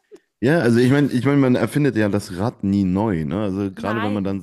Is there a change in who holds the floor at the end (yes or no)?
no